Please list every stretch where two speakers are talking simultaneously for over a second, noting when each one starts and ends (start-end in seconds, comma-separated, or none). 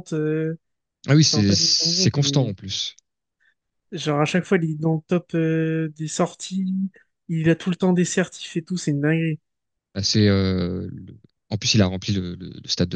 1.2-2.5